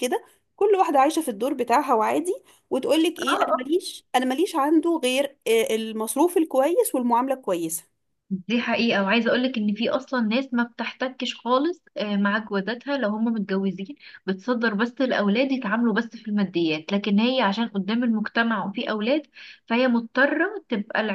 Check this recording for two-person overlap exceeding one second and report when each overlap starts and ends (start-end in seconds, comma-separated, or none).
none